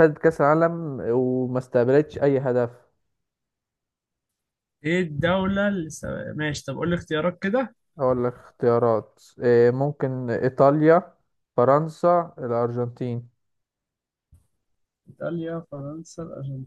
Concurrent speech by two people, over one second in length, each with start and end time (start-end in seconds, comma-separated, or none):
none